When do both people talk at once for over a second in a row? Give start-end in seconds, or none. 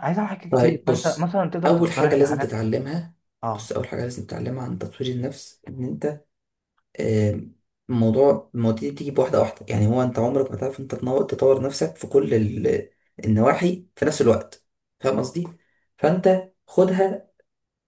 0.5-2.6